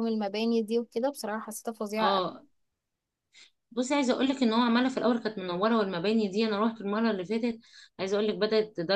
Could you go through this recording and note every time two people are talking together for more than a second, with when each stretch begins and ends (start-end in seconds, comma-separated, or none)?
none